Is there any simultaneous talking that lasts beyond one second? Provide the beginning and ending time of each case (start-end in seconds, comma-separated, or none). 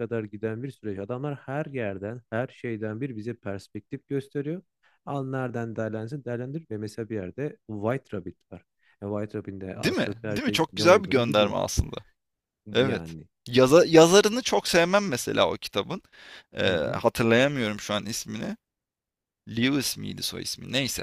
9.8-11.6